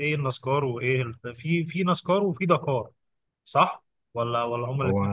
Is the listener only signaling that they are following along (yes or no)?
no